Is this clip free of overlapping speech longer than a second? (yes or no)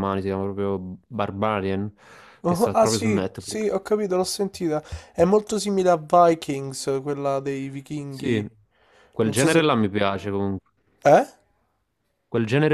no